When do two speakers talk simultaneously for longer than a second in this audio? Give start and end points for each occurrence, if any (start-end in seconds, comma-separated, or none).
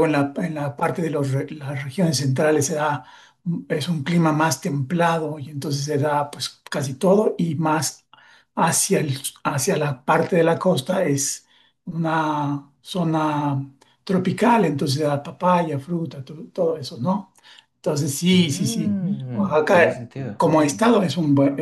18.3-20.4